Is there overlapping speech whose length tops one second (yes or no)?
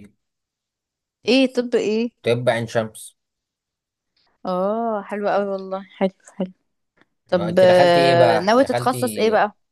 yes